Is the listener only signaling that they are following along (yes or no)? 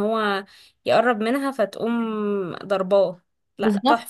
no